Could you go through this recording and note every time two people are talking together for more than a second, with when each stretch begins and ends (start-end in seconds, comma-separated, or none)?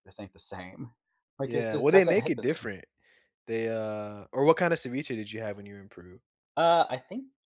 1.5-2.7